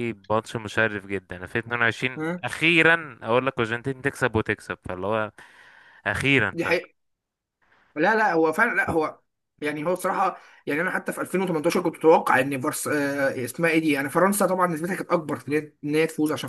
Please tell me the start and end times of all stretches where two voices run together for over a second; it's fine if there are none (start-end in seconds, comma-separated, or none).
none